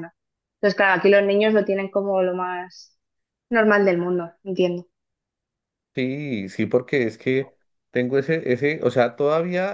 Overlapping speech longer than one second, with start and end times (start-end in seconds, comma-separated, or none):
none